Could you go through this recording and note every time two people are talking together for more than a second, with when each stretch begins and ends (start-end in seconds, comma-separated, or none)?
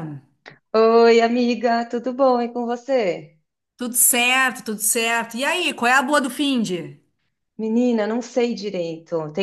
none